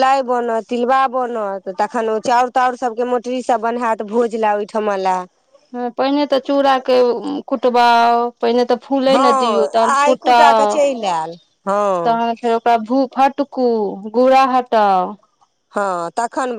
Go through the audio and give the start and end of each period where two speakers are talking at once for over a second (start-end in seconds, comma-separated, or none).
10.0-12.2